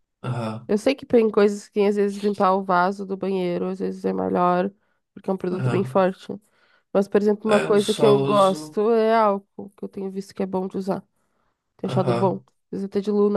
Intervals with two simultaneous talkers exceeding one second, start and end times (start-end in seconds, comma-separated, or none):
7.5-8.8